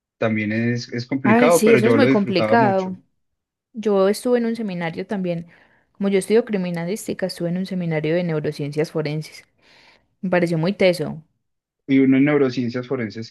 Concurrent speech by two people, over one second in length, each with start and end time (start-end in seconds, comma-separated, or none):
1.2-3.0